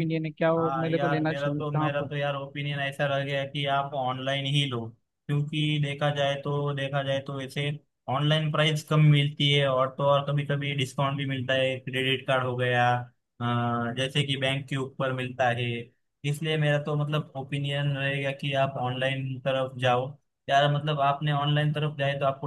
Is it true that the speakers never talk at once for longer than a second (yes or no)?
no